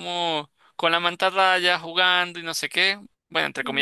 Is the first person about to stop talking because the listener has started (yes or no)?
no